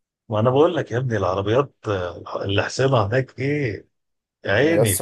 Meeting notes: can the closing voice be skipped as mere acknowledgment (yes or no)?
no